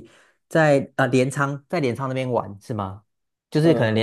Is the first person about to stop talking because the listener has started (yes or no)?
no